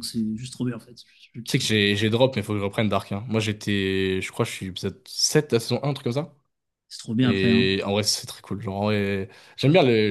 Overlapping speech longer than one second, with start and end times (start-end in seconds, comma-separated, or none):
none